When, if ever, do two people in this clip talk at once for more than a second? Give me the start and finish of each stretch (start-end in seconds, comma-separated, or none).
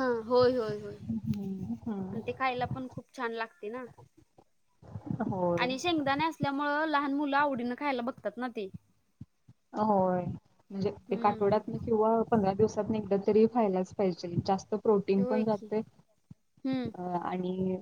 none